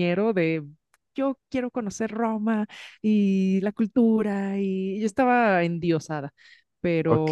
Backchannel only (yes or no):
no